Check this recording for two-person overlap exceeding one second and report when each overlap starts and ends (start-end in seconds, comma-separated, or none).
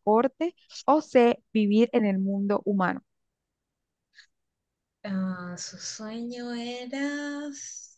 none